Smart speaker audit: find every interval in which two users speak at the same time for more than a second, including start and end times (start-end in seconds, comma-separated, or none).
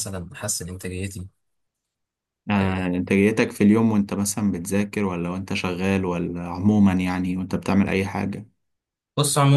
none